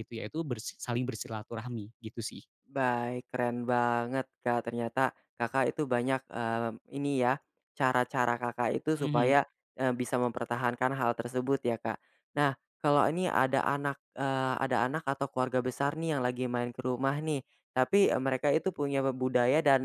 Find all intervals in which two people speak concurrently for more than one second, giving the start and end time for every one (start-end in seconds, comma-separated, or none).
none